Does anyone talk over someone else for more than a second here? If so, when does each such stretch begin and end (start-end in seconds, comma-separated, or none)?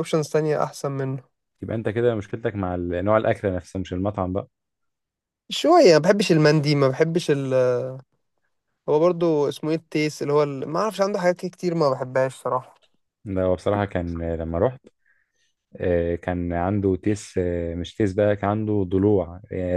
none